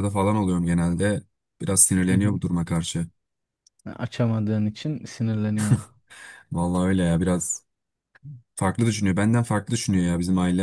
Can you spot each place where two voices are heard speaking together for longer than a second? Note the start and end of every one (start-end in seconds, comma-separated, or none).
none